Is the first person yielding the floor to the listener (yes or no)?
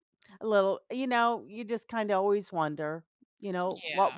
no